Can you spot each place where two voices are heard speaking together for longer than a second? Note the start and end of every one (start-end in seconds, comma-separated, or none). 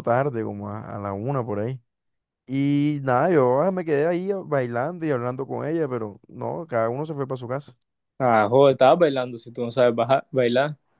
none